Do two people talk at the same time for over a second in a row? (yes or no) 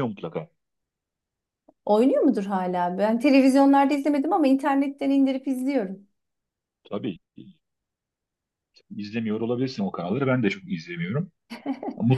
no